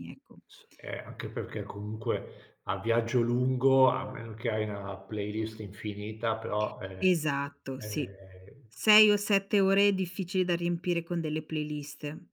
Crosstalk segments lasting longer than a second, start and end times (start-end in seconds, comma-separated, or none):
none